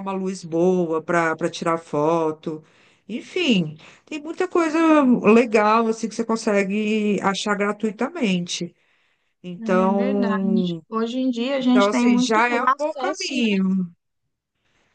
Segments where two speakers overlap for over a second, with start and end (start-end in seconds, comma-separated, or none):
9.6-10.8, 11.6-13.6